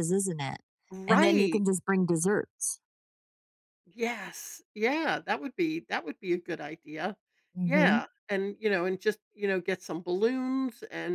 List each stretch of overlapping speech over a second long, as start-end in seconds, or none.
none